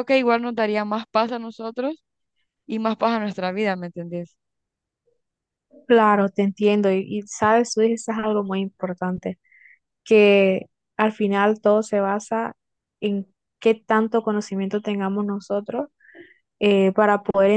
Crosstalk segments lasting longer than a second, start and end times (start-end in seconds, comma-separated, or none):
none